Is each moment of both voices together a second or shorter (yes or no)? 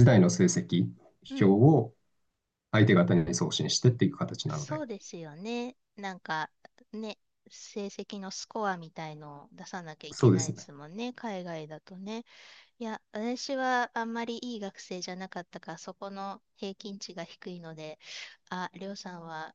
yes